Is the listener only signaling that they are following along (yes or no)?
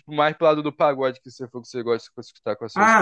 no